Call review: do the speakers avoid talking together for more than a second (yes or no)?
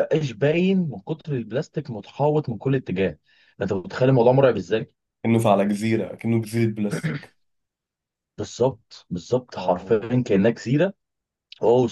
yes